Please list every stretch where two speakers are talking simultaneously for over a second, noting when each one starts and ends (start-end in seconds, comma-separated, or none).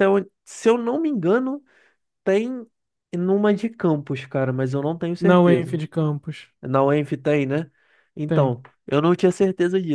none